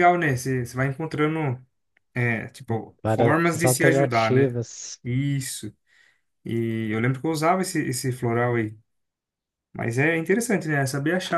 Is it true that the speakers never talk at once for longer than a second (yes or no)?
no